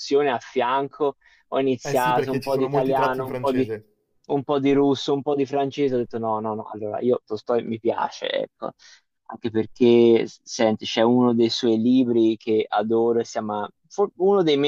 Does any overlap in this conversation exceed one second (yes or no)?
yes